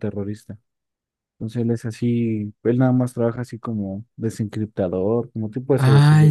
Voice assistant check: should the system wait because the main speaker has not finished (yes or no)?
no